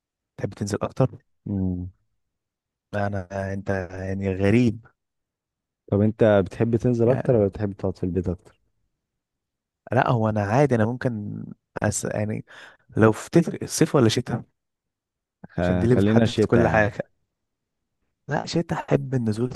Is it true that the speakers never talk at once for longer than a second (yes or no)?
no